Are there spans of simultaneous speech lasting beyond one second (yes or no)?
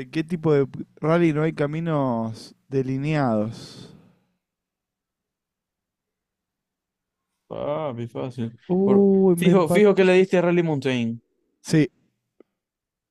yes